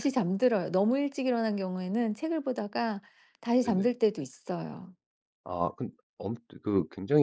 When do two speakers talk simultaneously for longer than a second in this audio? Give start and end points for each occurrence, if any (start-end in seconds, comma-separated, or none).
none